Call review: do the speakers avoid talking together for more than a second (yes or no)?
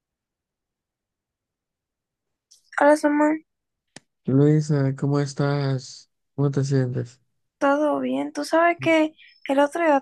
yes